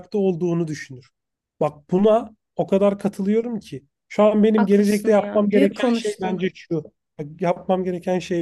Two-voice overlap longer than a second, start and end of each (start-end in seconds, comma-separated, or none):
4.5-6.5